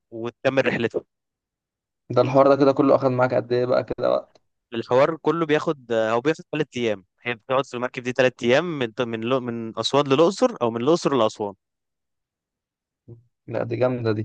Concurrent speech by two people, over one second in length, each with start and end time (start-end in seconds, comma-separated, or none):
none